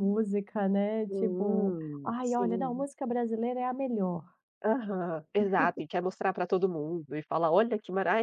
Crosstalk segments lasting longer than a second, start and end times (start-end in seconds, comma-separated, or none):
1.1-2.9